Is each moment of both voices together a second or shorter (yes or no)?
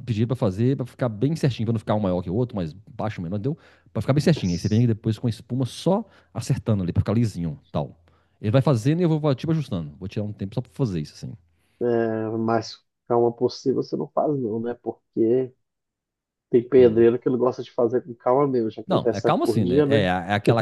no